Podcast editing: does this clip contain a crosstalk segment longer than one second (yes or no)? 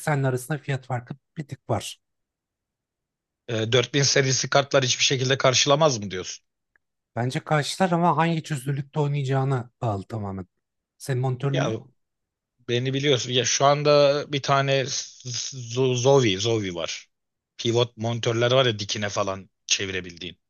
no